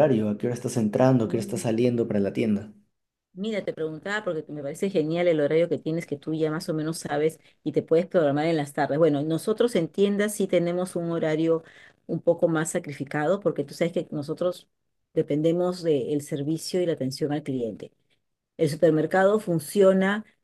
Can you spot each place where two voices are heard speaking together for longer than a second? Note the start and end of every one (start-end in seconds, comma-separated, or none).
none